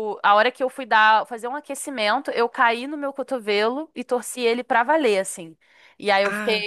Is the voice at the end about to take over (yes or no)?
no